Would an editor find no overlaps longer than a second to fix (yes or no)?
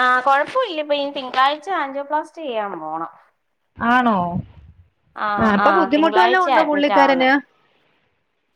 no